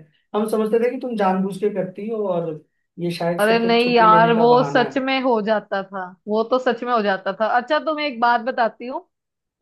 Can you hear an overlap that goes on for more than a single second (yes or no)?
yes